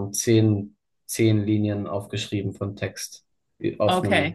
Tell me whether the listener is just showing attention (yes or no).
no